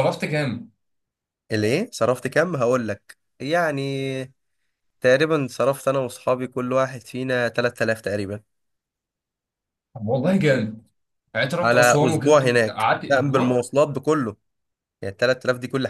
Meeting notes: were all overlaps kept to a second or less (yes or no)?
no